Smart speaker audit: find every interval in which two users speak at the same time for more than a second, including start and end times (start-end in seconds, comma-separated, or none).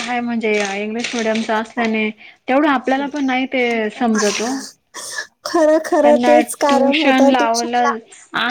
6.0-7.9